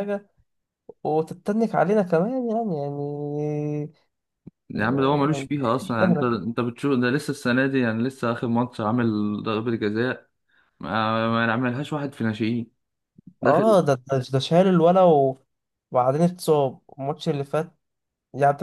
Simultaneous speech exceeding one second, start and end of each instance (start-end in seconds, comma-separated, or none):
4.7-6.3